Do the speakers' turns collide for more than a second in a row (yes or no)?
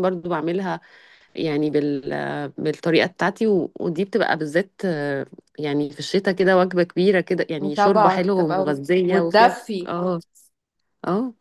yes